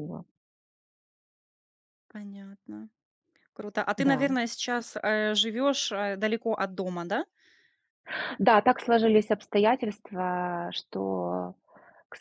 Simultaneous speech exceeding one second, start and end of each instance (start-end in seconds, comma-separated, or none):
none